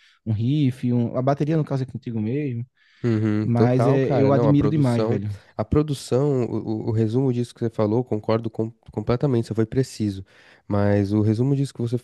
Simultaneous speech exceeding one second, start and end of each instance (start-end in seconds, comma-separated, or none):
3.4-5.2